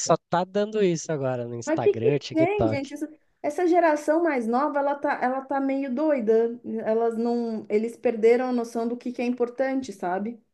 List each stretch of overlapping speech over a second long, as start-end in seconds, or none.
1.6-2.9